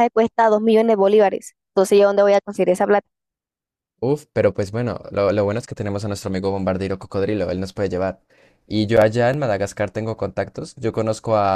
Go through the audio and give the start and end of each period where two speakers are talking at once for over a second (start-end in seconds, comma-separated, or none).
none